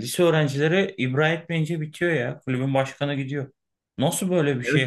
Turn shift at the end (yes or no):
no